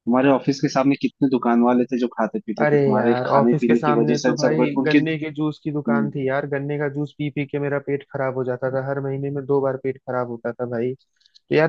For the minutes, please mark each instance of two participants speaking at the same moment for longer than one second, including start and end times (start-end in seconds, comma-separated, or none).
2.6-5.0